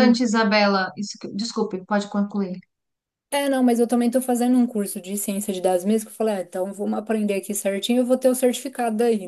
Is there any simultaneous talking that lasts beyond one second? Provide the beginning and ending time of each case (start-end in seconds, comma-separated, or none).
none